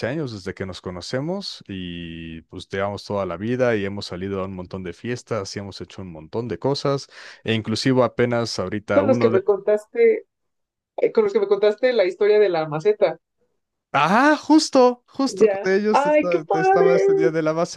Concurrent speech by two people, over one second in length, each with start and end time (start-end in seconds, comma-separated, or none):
15.3-17.1